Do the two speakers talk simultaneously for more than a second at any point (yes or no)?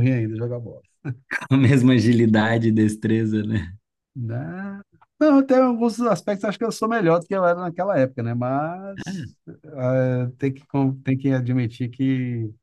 no